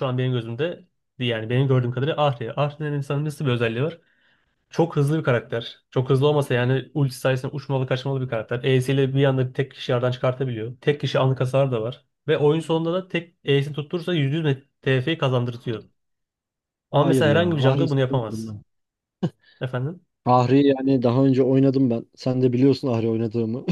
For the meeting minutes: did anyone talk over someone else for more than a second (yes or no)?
yes